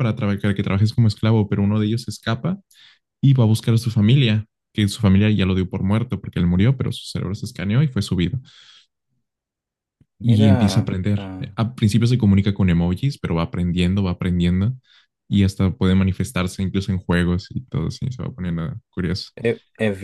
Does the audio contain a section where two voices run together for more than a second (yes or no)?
yes